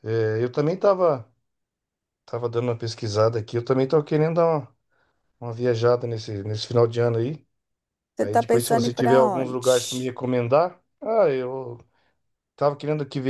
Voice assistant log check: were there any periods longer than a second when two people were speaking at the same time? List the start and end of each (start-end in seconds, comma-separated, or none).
8.2-10.1